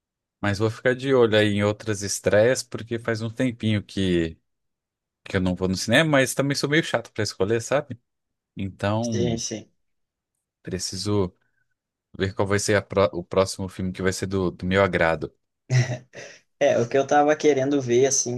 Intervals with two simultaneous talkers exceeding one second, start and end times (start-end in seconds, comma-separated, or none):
none